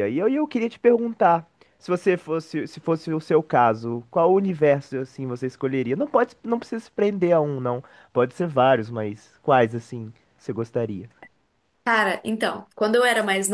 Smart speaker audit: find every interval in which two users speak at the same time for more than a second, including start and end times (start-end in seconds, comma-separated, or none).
none